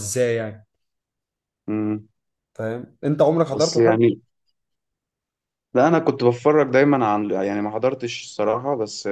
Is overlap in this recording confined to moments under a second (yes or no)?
yes